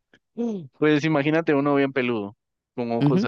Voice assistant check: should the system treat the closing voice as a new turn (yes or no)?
yes